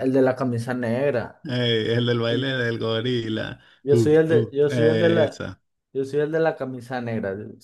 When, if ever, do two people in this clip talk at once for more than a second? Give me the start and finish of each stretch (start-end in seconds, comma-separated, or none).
3.8-5.5